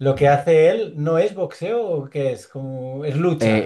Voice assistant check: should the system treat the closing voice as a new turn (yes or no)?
yes